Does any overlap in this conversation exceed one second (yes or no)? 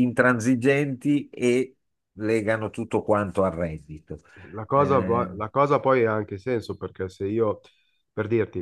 no